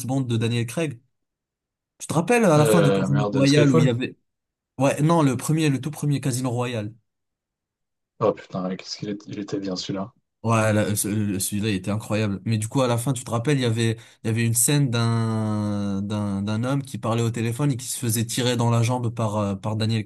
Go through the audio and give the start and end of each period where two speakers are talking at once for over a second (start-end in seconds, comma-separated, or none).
2.6-3.9